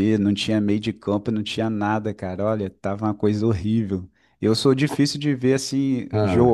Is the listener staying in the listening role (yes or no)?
yes